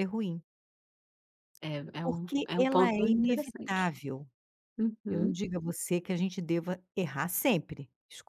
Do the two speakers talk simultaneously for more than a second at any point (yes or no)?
yes